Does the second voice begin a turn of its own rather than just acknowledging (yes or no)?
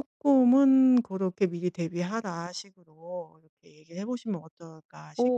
yes